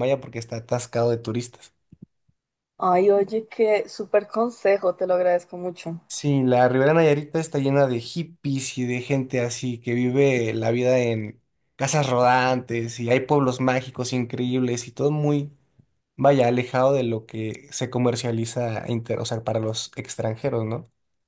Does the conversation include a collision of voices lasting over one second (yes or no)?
no